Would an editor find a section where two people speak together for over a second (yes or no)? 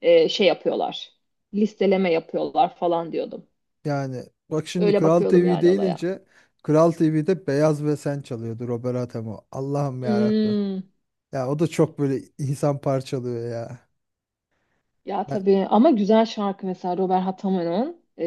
yes